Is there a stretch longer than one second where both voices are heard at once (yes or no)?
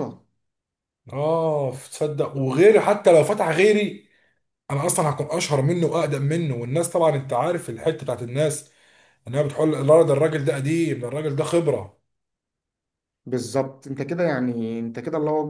no